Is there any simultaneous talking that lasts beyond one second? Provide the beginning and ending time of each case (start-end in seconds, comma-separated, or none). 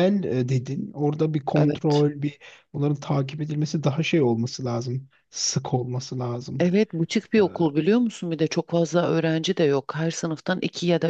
none